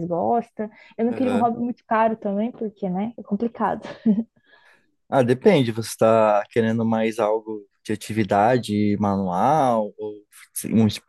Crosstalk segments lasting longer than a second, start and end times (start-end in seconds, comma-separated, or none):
none